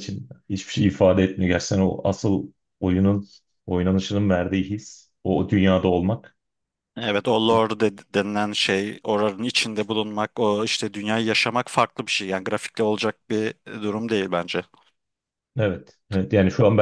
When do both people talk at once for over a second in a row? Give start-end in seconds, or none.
none